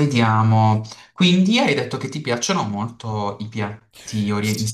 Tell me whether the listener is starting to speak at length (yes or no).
yes